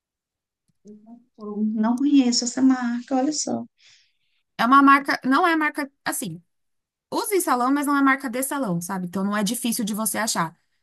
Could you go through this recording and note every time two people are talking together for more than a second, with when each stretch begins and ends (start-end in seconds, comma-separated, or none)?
none